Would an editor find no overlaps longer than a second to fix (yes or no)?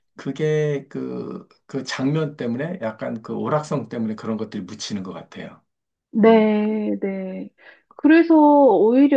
yes